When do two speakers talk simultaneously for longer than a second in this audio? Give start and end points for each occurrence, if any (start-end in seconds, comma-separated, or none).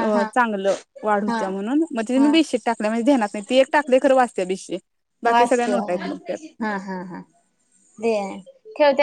none